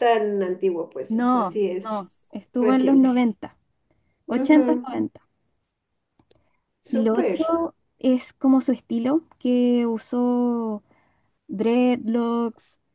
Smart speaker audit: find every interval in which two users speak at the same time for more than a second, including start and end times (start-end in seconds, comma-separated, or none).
1.1-3.3